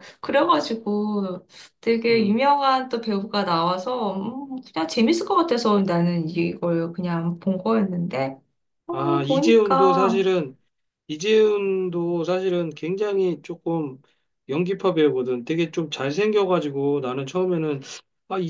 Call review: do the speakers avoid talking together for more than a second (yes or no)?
no